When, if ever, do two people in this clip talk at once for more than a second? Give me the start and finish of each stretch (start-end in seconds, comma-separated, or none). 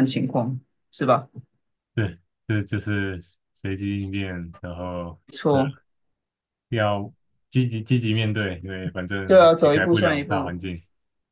9.2-10.6